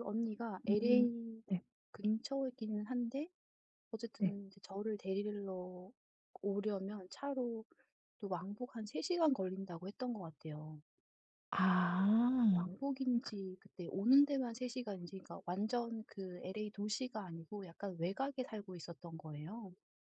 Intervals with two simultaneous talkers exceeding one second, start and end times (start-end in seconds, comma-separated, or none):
none